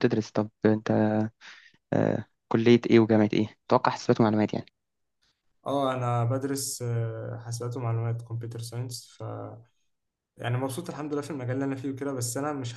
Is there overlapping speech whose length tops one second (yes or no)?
no